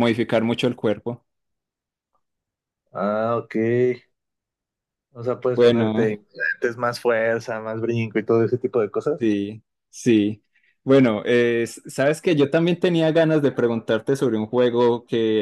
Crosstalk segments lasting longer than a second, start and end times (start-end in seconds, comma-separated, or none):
none